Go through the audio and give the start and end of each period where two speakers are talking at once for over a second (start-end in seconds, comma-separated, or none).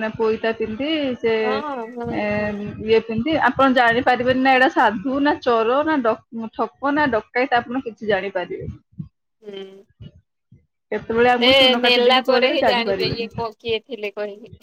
11.4-13.3